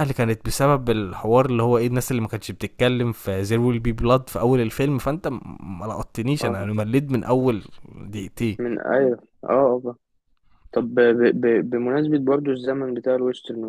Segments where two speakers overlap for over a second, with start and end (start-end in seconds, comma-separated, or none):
none